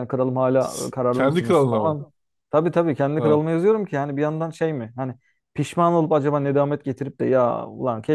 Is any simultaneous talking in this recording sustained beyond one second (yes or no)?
yes